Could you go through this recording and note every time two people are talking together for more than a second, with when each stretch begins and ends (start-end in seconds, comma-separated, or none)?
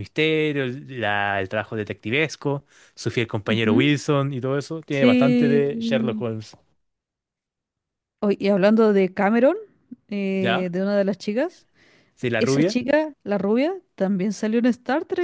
4.9-6.2